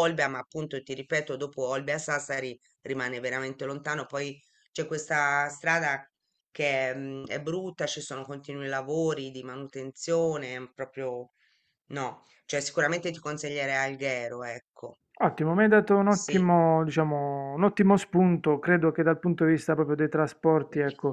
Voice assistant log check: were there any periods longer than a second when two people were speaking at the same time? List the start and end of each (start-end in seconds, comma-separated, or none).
none